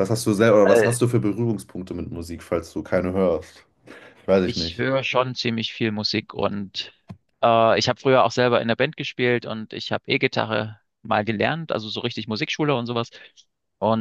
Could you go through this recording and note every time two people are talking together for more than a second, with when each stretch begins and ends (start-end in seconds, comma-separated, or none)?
none